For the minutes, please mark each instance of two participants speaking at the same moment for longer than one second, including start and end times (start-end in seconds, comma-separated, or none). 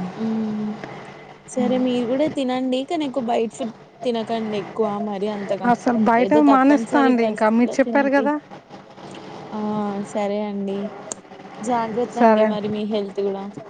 6.2-8.2